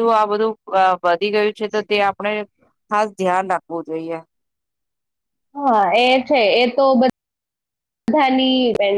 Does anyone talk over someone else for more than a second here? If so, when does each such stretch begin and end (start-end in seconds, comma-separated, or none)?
none